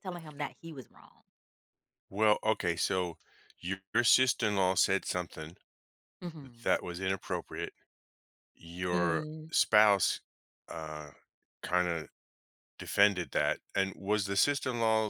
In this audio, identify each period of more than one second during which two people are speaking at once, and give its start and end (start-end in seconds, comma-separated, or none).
none